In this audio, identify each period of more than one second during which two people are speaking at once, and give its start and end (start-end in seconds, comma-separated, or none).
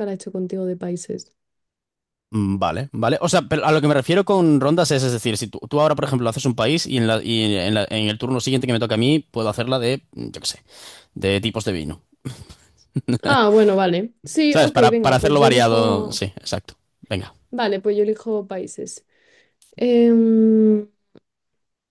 14.5-16.2